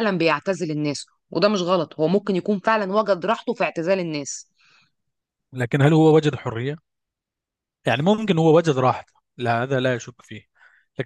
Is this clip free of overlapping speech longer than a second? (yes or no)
yes